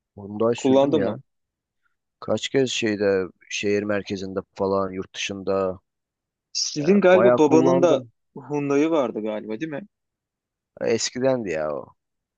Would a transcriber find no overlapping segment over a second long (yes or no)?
no